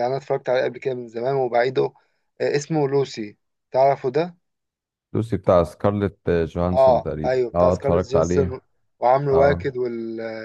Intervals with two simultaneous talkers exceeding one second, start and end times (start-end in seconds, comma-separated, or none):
6.7-8.5